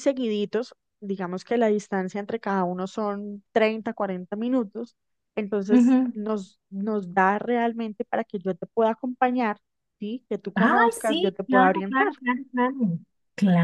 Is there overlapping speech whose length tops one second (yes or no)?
yes